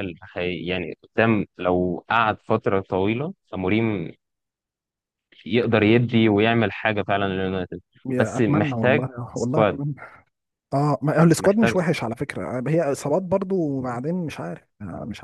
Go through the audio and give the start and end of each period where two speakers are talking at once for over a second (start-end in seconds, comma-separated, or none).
8.1-9.8